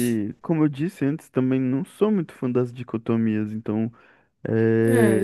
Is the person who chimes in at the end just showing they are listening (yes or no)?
yes